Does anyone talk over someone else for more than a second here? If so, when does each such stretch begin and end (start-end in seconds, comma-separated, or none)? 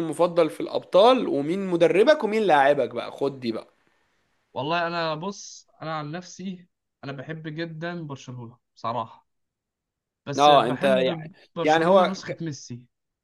10.4-12.4